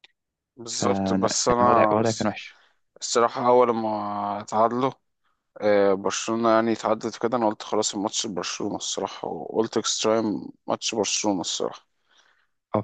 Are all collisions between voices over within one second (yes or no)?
no